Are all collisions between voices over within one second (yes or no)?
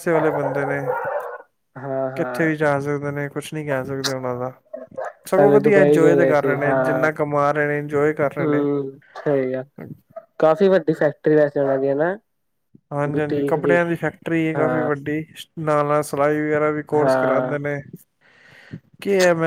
no